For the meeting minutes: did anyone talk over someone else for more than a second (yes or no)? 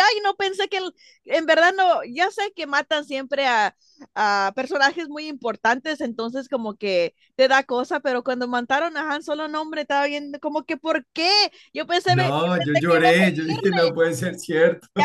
yes